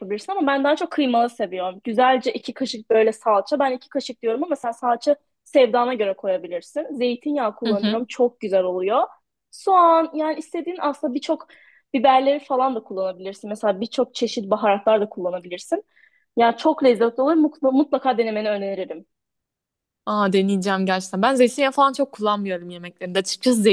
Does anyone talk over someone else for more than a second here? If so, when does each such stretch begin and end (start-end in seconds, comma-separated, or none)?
none